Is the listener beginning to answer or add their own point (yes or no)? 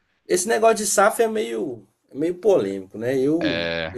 no